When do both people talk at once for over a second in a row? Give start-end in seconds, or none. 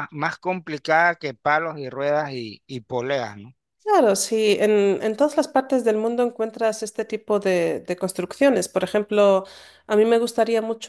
none